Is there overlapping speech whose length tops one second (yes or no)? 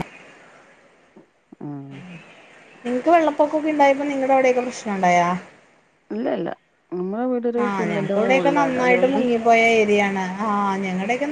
yes